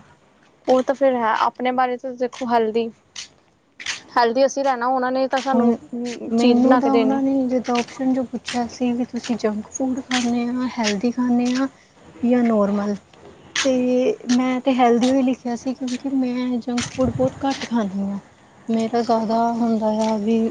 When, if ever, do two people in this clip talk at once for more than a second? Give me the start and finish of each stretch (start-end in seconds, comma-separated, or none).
none